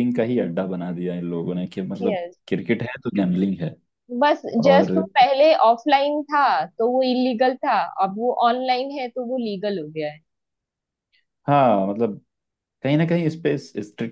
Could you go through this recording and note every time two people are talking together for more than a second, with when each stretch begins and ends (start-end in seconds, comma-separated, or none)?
none